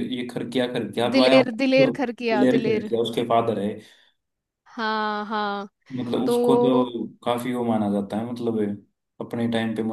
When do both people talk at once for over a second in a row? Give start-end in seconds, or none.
1.1-2.9